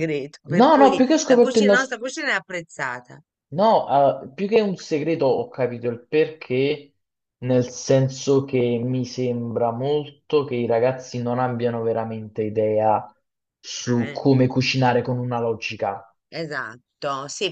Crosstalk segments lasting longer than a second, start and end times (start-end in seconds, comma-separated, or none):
0.5-1.9